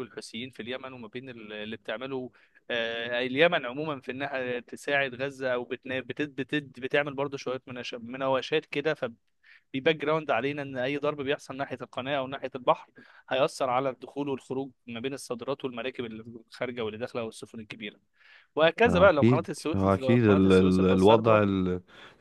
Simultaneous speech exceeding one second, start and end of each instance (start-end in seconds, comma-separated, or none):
18.9-21.4